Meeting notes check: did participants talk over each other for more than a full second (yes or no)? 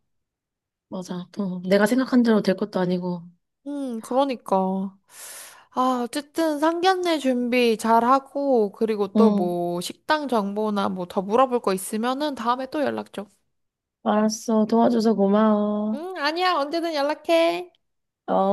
no